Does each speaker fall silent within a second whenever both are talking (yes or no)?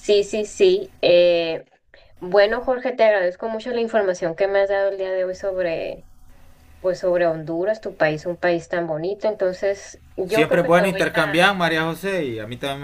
no